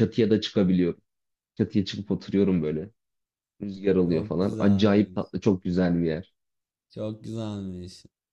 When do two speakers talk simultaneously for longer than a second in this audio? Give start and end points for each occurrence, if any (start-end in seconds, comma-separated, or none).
4.0-5.3